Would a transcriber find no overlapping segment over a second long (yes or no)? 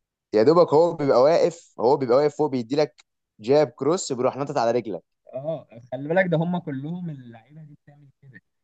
yes